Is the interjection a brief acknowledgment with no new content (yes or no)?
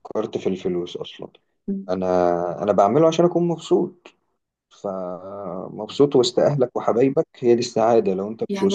no